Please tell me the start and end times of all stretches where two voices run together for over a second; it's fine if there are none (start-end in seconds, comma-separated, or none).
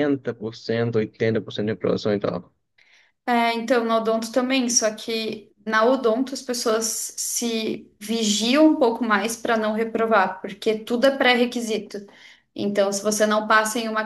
none